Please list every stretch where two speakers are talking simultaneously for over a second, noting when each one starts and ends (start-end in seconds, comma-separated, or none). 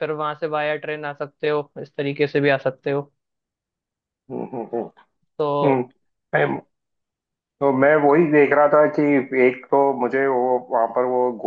none